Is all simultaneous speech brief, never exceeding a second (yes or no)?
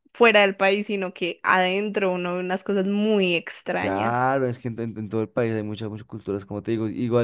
yes